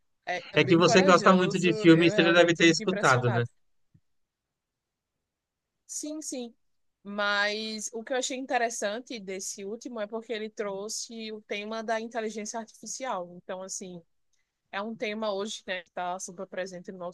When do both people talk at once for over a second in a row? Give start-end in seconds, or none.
0.6-3.4